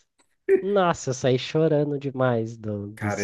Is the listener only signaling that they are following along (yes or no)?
no